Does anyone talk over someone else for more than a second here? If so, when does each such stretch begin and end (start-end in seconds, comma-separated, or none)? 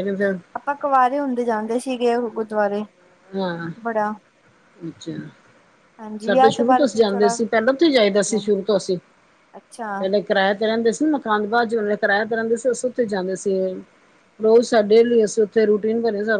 6.2-8.4